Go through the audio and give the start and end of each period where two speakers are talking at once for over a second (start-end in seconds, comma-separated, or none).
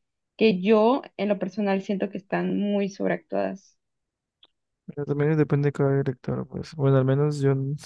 none